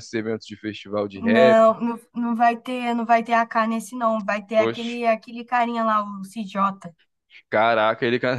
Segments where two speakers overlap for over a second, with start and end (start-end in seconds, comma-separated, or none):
none